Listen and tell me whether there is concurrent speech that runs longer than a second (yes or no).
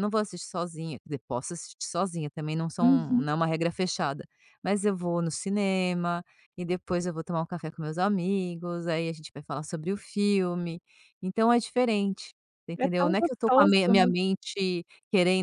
yes